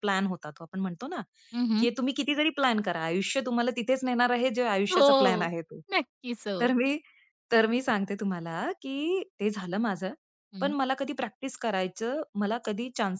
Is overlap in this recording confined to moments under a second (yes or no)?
yes